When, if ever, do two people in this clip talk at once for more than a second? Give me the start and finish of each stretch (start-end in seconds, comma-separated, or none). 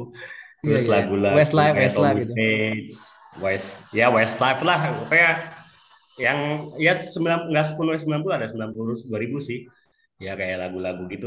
0.6-2.3